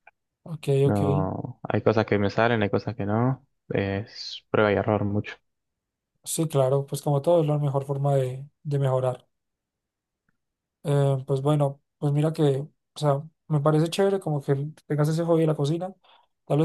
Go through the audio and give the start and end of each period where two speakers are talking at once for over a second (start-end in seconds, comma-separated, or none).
none